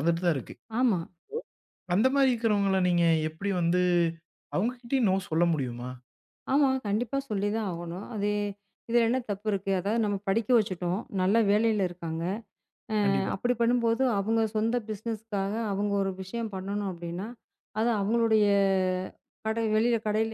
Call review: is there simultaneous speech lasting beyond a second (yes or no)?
no